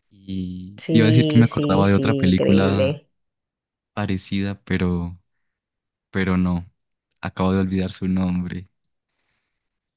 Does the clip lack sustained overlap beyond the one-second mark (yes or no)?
no